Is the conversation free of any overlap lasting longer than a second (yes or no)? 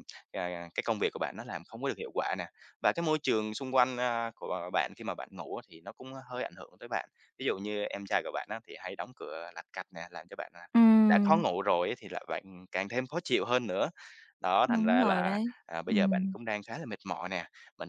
no